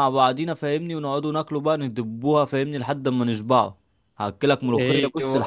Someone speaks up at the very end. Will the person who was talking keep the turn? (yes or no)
yes